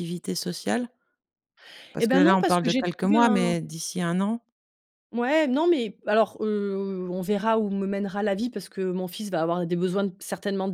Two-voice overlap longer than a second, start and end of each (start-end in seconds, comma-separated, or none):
2.0-3.5